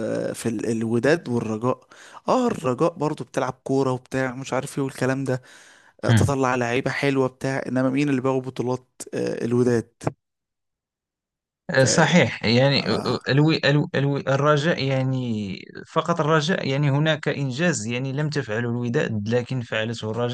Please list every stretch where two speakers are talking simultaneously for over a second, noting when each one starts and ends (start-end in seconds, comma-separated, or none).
none